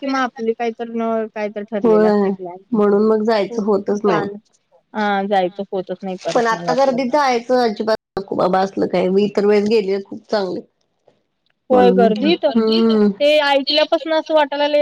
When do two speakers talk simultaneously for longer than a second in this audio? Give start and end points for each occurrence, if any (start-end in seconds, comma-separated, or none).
11.7-13.3